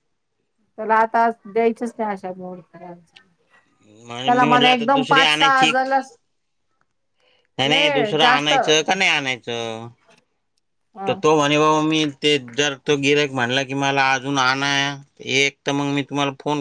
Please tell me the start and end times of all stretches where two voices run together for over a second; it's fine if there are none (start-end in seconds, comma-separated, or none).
4.2-5.7